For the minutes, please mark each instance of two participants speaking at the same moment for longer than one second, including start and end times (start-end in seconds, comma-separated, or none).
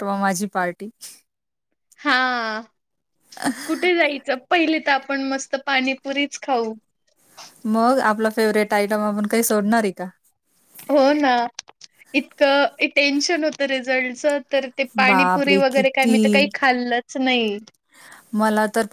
14.9-16.5